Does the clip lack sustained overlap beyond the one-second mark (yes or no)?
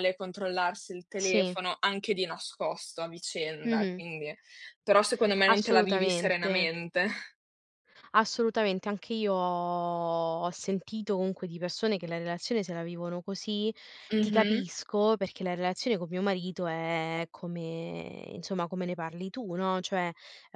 no